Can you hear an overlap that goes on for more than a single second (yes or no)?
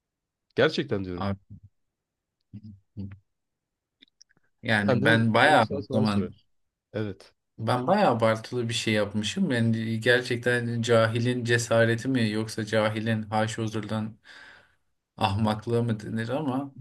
yes